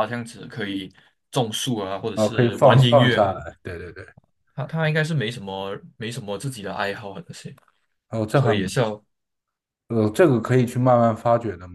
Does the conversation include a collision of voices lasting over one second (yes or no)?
yes